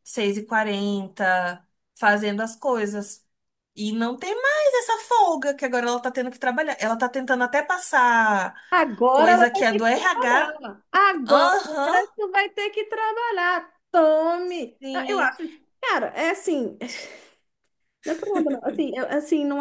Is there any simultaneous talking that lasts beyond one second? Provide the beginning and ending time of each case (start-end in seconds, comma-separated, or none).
9.1-10.6